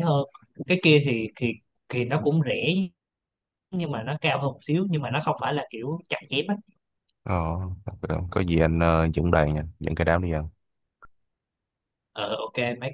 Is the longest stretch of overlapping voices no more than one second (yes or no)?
yes